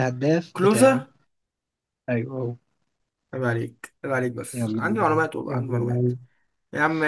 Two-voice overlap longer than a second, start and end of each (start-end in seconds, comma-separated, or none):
4.5-6.1